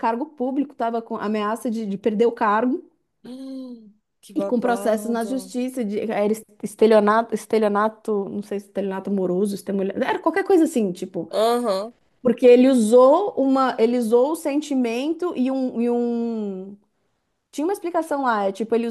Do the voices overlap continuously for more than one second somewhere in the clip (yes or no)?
yes